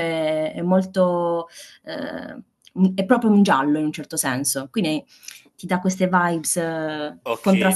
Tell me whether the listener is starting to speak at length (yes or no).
yes